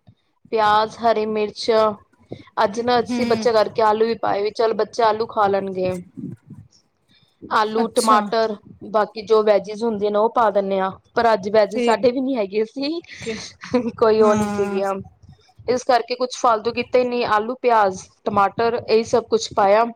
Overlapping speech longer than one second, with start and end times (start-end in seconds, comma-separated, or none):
none